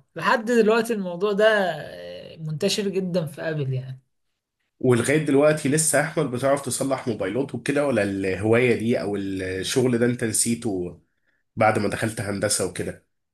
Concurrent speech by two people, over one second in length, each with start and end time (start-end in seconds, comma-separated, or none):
none